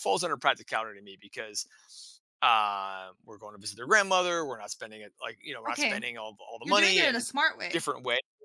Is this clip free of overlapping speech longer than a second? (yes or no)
no